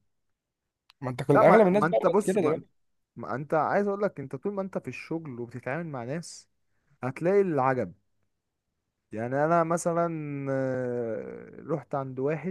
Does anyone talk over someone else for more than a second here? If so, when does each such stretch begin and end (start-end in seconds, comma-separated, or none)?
1.4-2.6